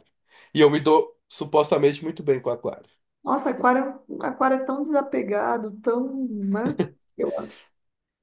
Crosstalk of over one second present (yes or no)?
no